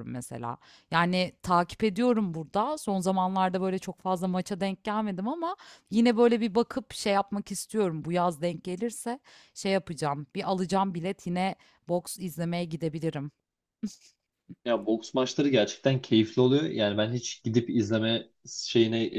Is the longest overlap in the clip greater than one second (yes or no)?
no